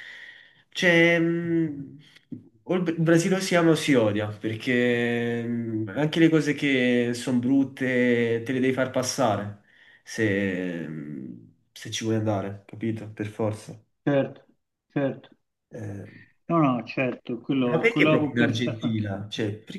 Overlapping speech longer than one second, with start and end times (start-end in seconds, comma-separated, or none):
17.6-19.1